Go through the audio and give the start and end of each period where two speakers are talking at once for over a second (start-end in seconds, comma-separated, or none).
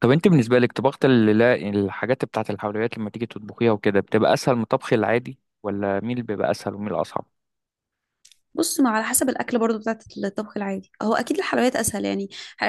none